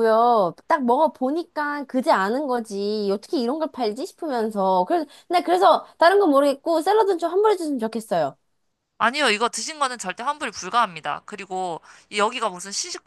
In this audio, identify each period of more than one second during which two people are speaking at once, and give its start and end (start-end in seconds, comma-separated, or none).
none